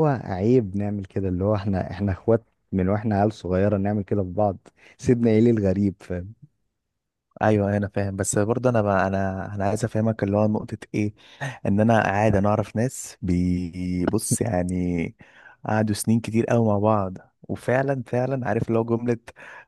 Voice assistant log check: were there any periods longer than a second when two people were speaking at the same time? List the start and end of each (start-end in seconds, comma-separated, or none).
none